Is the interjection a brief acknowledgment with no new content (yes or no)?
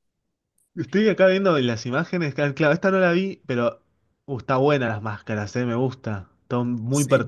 no